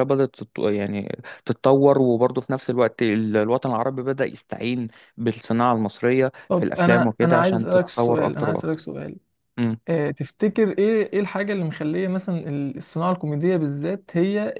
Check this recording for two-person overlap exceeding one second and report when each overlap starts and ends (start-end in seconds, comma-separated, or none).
6.5-8.9